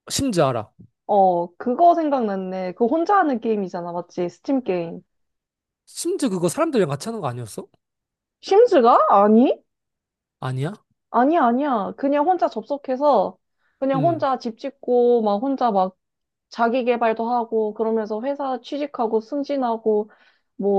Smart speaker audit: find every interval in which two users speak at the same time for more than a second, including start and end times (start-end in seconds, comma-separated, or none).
none